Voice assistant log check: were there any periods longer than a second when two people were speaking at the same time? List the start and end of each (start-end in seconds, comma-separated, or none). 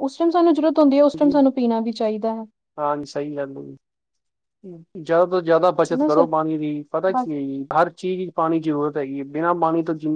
none